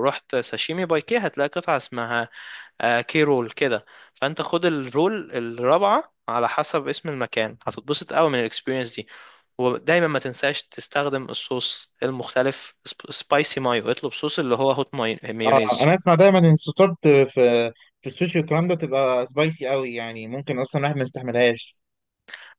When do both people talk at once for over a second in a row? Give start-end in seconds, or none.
none